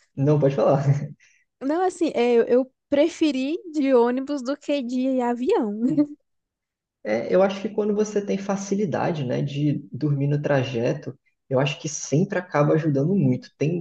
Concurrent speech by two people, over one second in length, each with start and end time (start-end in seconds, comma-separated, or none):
none